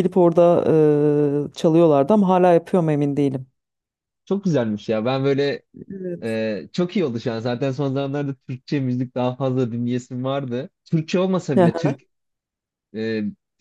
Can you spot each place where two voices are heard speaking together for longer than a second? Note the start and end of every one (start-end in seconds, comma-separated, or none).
none